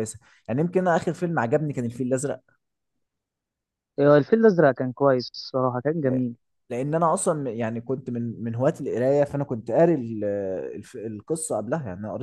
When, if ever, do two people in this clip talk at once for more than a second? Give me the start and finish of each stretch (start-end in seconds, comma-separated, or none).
none